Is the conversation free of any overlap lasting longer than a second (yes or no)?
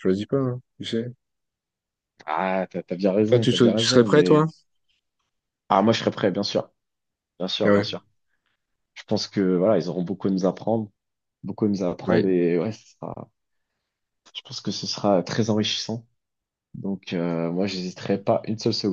no